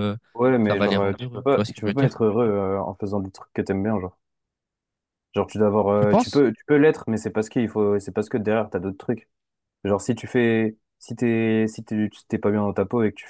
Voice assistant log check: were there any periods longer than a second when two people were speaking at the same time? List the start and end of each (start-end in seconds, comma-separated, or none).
0.7-2.2